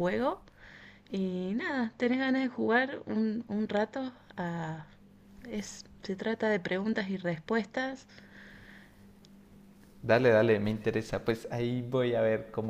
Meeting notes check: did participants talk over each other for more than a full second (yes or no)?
no